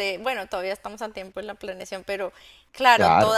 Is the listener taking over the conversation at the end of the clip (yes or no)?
no